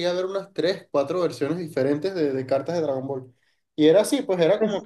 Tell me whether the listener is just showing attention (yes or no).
yes